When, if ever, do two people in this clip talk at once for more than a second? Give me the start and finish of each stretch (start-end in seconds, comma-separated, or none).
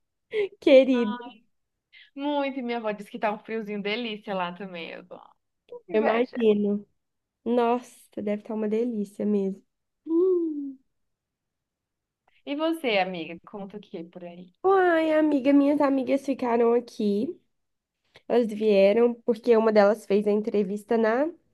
none